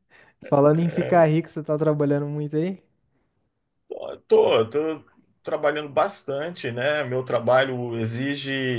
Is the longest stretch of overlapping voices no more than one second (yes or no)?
yes